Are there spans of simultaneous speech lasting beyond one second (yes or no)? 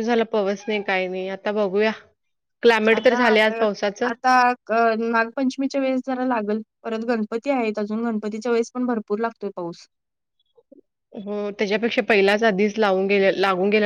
no